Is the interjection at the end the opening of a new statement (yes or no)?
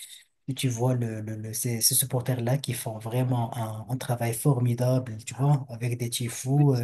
no